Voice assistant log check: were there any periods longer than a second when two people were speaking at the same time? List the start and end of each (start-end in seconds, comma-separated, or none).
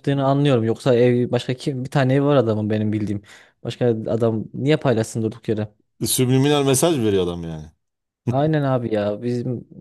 none